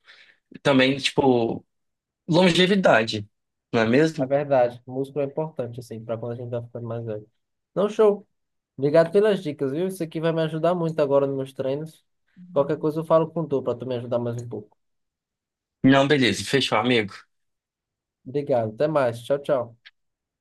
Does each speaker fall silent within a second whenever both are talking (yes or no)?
yes